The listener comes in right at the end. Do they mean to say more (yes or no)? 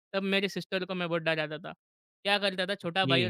no